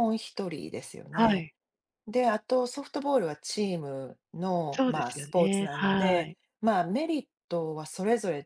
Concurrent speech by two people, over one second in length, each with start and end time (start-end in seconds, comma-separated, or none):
4.7-6.4